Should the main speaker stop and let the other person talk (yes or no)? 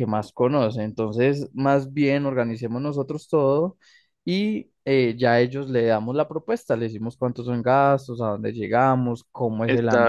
no